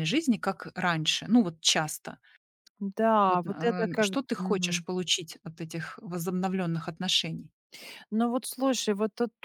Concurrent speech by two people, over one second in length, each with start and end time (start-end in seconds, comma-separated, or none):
3.3-4.8